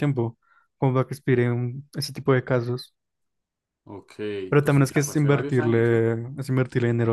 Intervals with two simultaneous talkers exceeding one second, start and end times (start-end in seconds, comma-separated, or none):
4.6-6.0